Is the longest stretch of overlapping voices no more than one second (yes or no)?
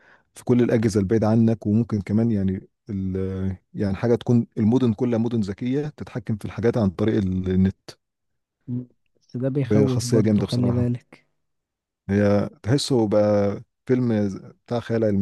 no